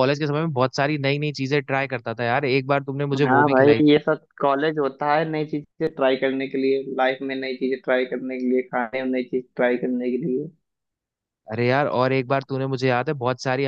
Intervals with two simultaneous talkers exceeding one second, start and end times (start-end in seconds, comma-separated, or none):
none